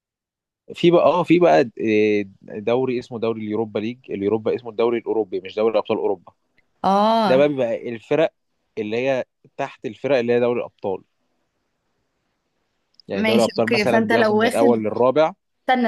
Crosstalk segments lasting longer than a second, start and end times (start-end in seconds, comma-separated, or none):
13.1-14.7